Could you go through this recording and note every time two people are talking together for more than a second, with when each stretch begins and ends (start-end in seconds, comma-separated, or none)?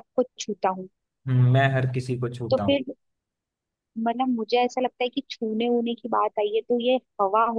none